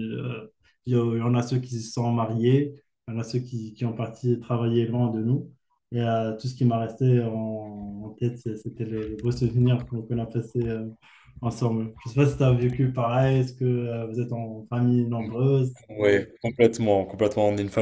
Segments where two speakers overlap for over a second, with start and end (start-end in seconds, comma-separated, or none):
none